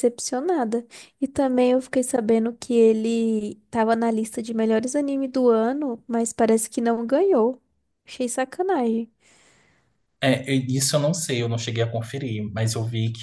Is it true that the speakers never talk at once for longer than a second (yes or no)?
yes